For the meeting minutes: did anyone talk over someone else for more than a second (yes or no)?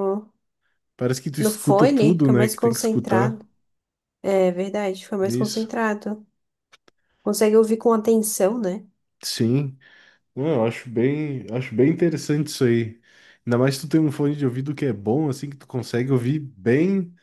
yes